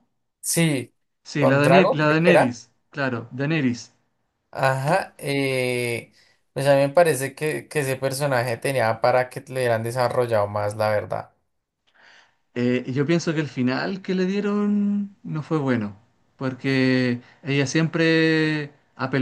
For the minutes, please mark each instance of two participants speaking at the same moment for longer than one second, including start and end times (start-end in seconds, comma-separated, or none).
1.4-2.6